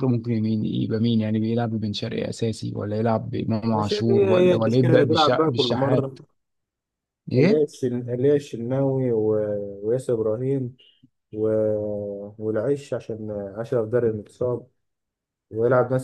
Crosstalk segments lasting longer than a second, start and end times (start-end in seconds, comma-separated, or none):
3.7-6.2